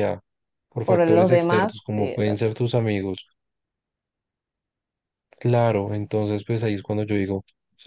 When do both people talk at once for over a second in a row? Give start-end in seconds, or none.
0.8-2.5